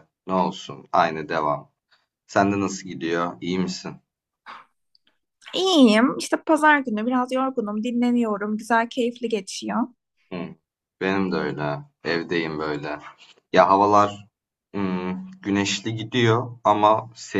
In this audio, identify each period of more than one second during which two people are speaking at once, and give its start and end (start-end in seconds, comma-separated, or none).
none